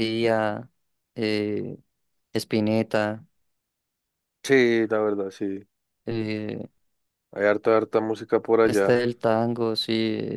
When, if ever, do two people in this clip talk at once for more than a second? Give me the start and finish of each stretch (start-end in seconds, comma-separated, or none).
none